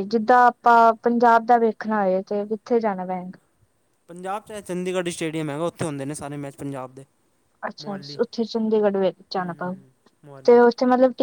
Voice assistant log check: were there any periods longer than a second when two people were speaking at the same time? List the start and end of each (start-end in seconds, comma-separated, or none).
none